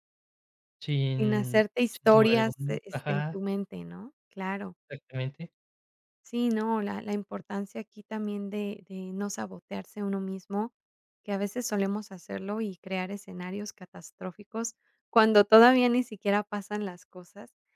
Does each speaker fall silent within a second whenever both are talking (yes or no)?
no